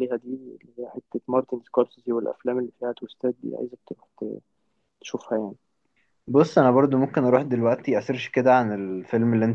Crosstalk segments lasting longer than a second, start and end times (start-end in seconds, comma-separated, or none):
none